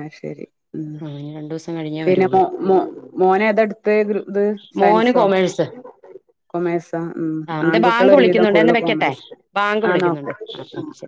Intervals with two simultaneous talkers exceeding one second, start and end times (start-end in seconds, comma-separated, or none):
7.7-9.1